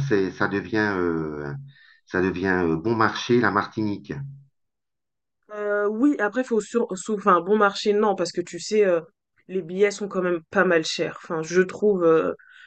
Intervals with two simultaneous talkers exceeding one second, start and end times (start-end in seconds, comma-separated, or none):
none